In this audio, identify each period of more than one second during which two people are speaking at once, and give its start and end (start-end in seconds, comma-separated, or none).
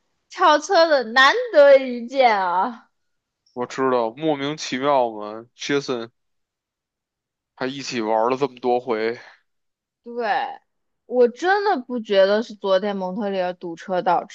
none